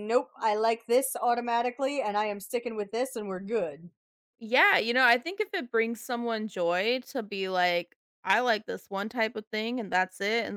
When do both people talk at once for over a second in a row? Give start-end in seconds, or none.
none